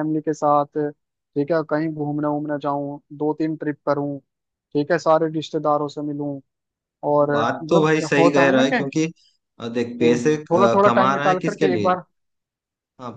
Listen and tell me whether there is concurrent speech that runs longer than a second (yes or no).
yes